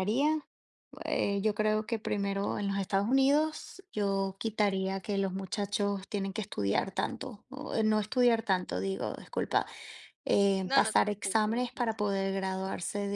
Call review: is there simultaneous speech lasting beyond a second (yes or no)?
yes